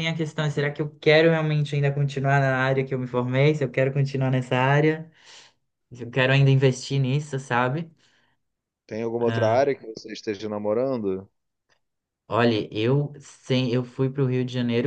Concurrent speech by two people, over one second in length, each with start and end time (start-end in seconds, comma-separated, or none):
none